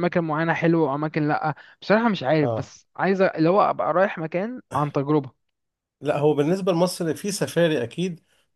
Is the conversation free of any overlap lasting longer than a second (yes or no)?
yes